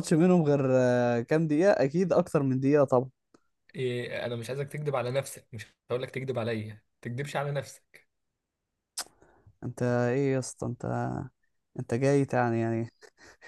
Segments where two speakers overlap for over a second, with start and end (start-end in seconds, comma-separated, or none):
none